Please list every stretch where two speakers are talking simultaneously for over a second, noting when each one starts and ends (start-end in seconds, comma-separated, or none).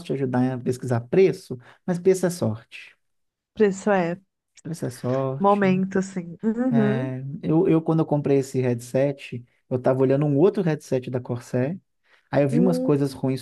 none